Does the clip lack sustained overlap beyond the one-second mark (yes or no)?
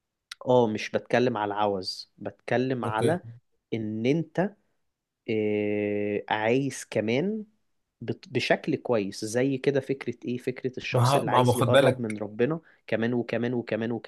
no